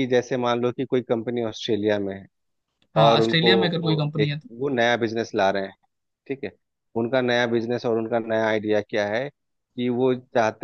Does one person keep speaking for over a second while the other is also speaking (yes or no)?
no